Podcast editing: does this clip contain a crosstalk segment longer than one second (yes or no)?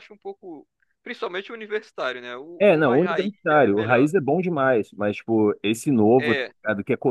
yes